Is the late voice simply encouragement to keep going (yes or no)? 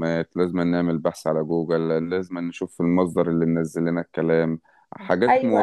yes